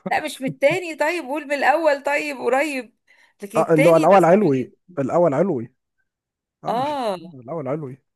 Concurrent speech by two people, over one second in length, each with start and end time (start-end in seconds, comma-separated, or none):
3.6-4.9